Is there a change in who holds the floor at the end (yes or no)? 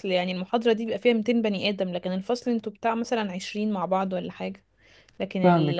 yes